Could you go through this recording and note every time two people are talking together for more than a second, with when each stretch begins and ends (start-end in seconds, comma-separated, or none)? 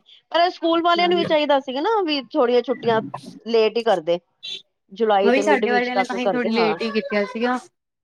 5.2-6.7